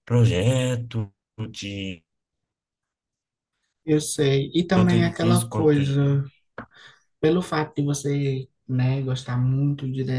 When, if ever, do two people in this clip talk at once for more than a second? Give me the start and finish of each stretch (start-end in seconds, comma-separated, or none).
4.7-6.1